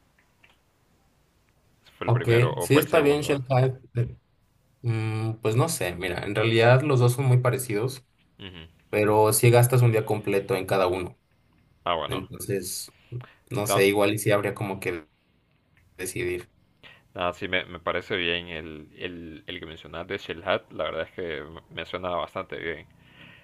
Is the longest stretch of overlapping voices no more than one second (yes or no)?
no